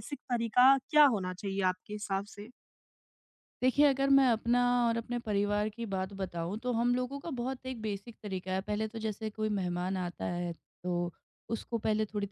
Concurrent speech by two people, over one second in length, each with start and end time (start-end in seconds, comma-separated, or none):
none